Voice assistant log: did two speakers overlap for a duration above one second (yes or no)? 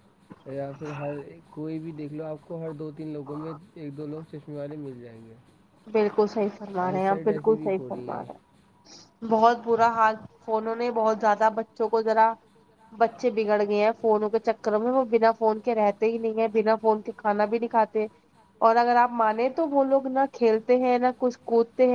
yes